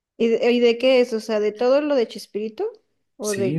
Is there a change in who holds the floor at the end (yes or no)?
yes